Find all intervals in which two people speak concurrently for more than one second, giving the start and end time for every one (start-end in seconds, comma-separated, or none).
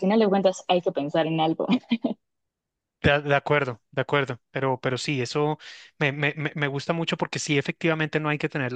none